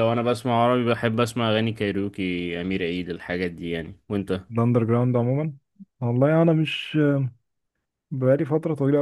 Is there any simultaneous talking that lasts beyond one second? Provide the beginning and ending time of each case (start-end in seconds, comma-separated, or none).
none